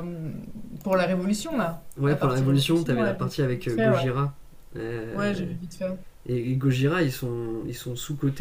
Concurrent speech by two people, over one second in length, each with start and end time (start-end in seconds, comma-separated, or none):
2.0-4.1